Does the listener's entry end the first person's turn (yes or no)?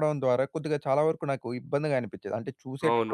yes